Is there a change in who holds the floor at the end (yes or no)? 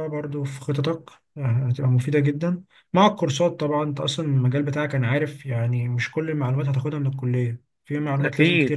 yes